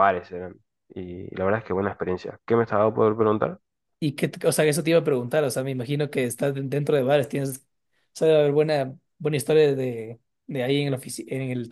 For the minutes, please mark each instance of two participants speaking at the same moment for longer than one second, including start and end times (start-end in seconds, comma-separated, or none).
none